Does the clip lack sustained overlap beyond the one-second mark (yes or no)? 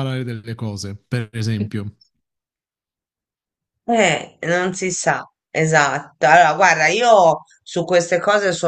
yes